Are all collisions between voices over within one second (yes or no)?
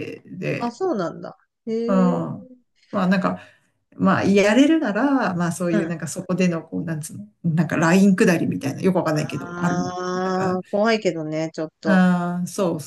no